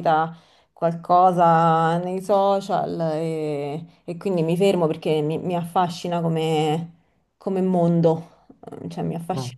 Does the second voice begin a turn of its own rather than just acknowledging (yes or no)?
no